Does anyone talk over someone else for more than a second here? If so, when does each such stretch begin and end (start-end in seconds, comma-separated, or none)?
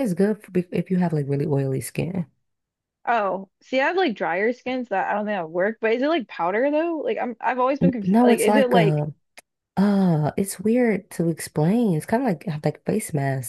7.8-9.0